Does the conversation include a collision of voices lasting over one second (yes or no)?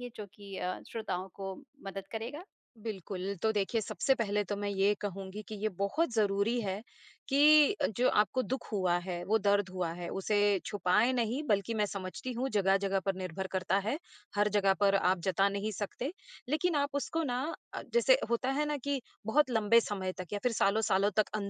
no